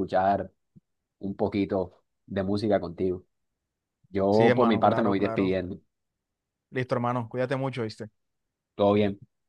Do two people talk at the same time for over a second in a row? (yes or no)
yes